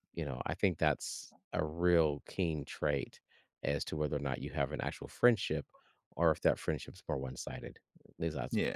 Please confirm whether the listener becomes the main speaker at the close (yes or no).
no